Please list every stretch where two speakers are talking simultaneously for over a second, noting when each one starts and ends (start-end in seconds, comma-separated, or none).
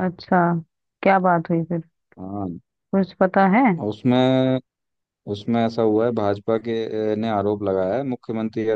none